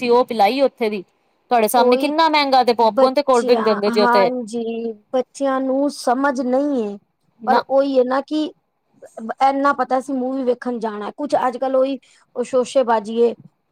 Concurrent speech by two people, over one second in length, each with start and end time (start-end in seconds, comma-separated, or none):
none